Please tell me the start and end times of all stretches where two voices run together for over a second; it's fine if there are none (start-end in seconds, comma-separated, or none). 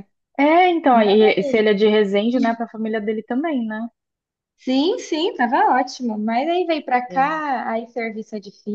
none